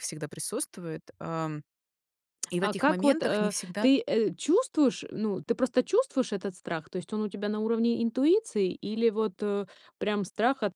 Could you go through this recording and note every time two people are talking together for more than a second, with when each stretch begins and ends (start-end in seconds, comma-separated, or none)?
2.6-3.9